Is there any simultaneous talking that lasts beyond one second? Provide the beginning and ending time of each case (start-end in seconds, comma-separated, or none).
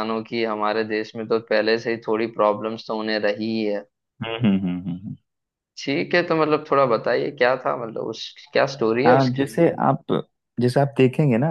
none